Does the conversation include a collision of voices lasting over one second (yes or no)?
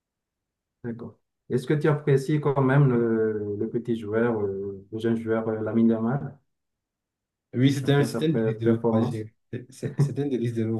yes